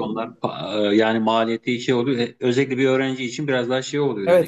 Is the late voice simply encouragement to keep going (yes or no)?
no